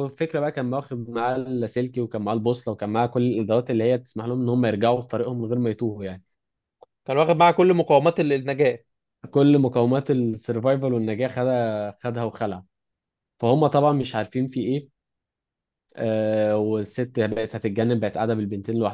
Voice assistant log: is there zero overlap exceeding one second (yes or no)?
yes